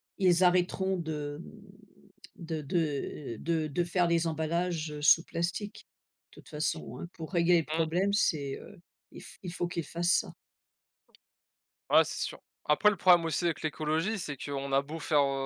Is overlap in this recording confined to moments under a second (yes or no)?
yes